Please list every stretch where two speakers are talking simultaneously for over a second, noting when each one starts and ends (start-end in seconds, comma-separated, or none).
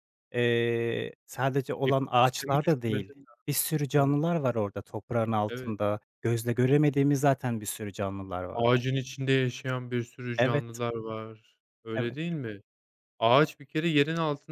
1.9-3.2